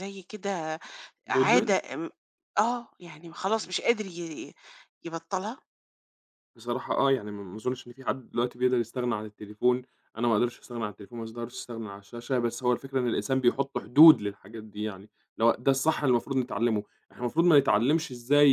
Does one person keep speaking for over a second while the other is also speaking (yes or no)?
no